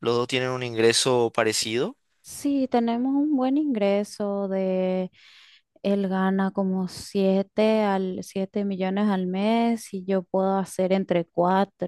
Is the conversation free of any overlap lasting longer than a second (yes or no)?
yes